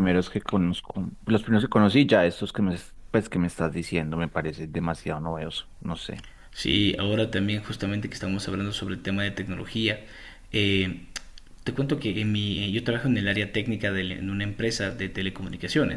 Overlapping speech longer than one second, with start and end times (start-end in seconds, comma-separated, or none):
none